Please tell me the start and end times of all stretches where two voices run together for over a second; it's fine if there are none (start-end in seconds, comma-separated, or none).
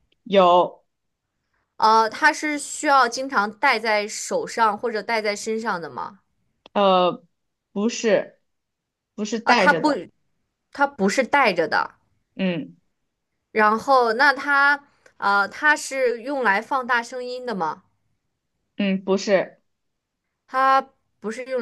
none